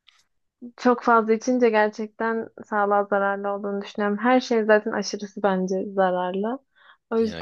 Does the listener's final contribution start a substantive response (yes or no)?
no